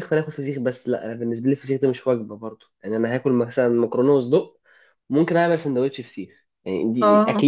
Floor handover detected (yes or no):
no